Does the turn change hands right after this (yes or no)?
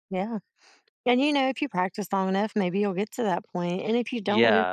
yes